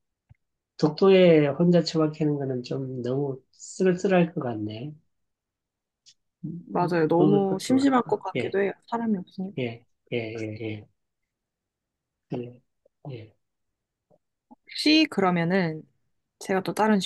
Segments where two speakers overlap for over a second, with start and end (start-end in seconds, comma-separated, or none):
6.7-8.6